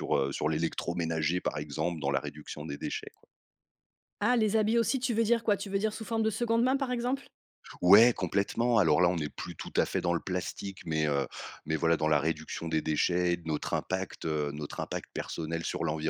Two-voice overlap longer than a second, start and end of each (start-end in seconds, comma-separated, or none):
none